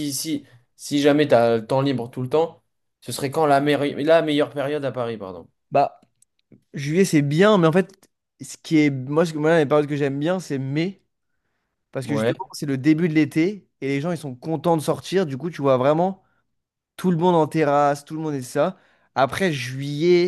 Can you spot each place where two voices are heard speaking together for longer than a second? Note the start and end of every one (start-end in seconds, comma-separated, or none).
none